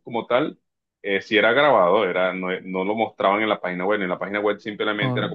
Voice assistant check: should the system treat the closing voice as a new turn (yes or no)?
no